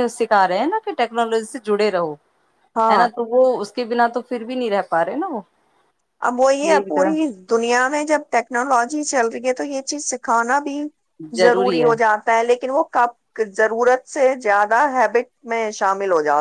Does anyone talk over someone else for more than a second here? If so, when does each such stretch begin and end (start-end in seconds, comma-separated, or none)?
none